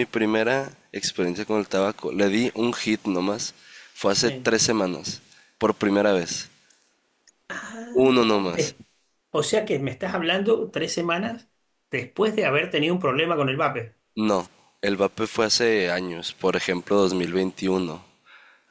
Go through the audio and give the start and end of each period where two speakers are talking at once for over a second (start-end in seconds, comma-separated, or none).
none